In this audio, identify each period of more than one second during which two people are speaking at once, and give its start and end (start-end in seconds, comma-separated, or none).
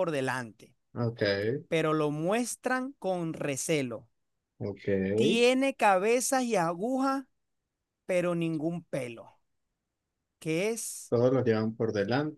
none